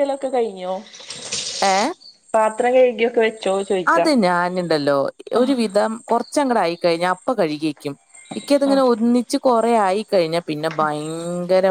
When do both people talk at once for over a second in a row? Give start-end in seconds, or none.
none